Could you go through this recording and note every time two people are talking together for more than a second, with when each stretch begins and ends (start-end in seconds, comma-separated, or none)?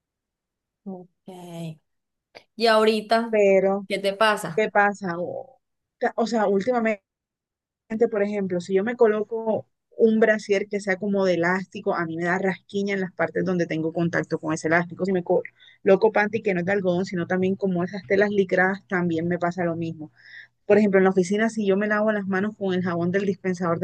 none